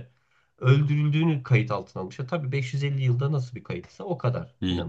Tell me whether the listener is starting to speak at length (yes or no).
yes